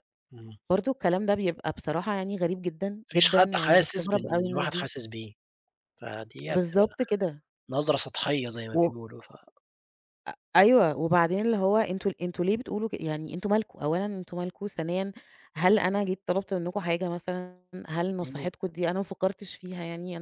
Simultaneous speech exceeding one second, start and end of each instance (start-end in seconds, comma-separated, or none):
3.1-4.9